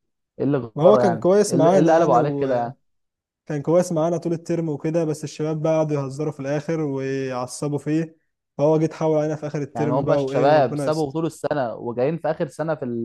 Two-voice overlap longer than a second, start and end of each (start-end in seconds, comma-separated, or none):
0.8-2.7, 9.8-11.1